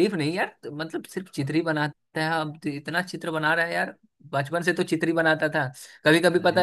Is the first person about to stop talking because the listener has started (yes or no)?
no